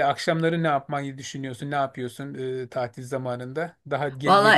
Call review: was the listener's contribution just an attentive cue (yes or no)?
no